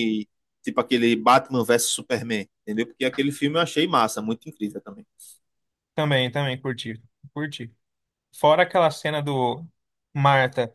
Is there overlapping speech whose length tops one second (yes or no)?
no